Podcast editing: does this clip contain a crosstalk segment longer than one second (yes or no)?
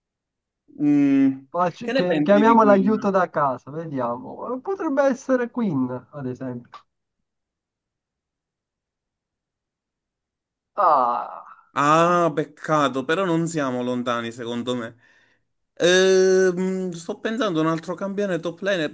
yes